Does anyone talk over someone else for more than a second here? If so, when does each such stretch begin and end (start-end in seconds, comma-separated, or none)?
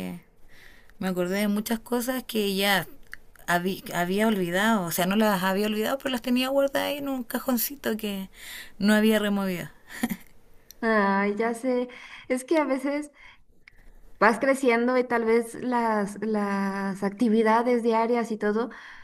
none